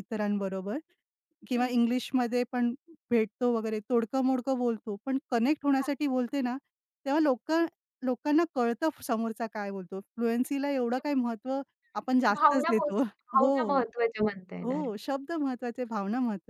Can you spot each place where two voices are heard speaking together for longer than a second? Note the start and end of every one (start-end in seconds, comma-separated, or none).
12.0-13.5